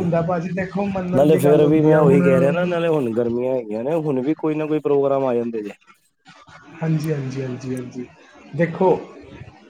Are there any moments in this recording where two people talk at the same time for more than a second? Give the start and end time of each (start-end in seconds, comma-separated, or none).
1.4-2.7